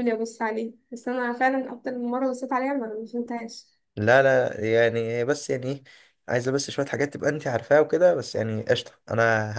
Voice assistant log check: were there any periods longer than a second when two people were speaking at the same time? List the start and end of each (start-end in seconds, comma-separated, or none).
none